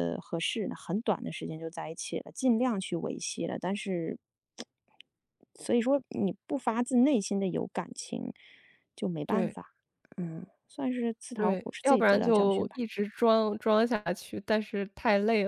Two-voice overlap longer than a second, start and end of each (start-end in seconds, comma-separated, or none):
11.3-12.8